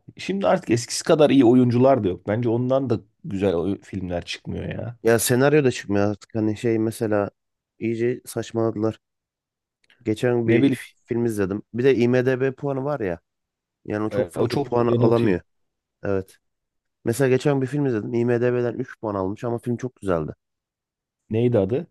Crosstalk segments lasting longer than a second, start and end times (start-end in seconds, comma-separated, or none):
14.1-15.3